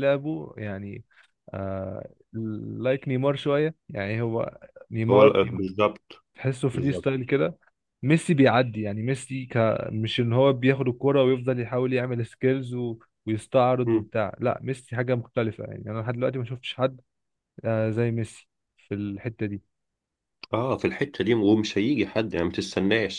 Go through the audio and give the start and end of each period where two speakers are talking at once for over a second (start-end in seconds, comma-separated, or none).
none